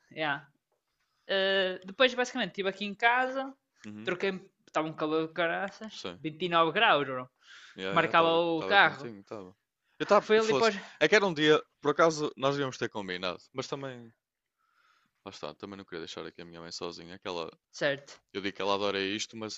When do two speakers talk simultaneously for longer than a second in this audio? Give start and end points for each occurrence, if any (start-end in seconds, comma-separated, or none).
7.9-9.1